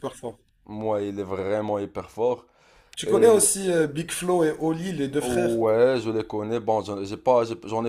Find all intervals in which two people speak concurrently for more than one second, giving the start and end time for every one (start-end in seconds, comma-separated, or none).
none